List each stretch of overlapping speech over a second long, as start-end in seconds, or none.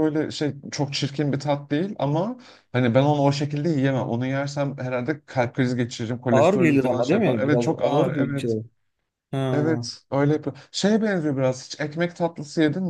6.3-8.6